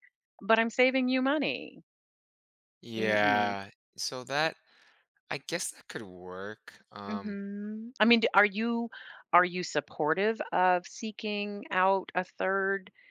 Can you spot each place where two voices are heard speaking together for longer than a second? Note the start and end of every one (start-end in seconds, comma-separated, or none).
none